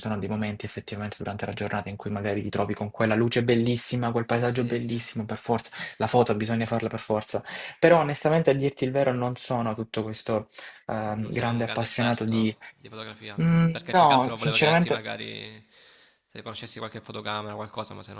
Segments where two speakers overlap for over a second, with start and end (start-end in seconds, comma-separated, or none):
11.2-12.6, 13.4-15.1